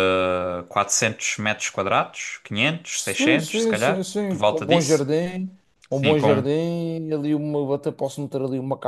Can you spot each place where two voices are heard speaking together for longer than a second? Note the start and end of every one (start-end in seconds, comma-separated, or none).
2.9-5.0